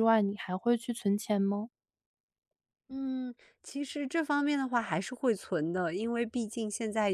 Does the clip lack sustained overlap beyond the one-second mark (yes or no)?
yes